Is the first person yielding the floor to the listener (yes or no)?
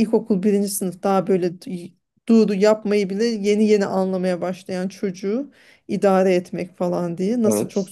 no